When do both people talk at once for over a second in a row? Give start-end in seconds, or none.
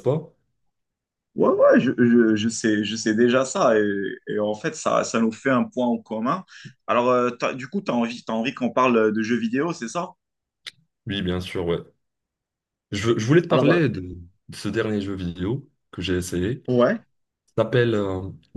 none